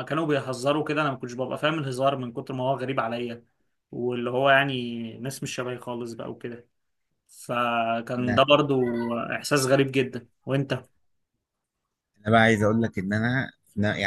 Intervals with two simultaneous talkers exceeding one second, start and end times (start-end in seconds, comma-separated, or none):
none